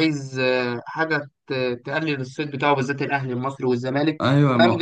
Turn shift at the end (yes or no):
no